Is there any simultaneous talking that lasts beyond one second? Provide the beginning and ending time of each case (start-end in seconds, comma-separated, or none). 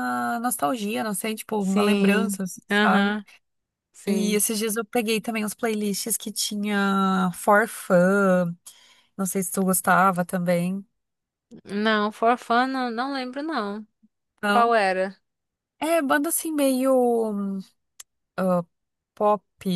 1.6-3.1